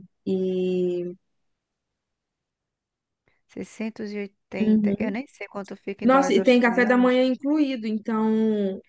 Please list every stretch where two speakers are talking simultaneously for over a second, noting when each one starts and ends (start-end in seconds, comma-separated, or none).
6.0-7.2